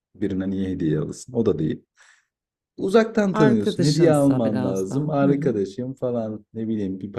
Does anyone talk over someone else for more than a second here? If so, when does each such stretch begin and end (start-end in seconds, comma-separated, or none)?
3.3-5.5